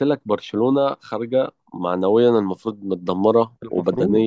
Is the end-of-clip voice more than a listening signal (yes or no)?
no